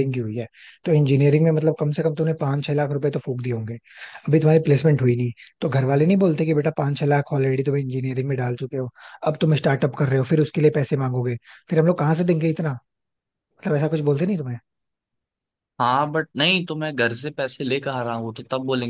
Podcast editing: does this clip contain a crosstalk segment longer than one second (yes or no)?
no